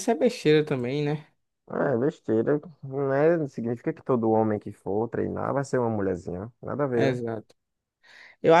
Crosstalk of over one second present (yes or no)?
no